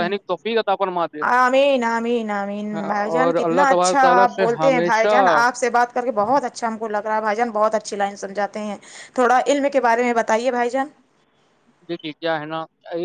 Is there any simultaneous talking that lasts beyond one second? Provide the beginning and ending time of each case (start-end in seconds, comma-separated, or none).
3.5-5.1